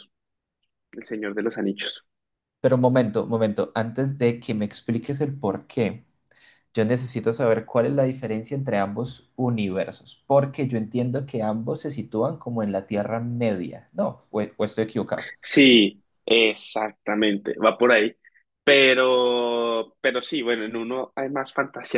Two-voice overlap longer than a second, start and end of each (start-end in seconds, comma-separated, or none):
none